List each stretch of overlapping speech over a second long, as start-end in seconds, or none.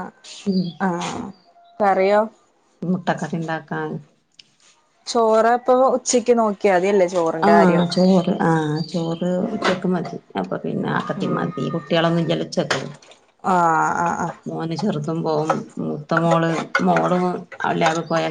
none